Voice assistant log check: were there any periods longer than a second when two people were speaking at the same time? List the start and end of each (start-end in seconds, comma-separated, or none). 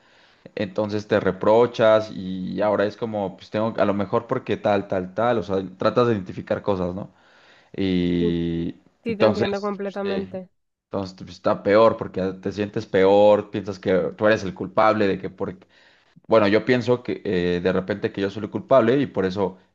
9.0-10.4